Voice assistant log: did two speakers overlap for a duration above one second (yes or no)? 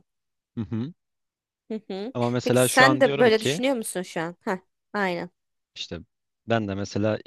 yes